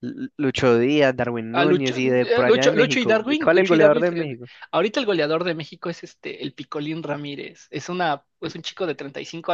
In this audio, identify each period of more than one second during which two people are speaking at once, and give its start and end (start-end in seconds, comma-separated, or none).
1.5-4.5